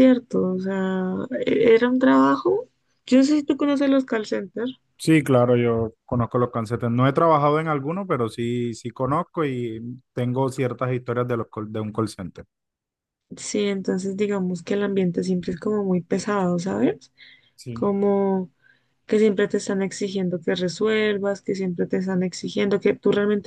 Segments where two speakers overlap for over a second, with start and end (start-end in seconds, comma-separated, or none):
none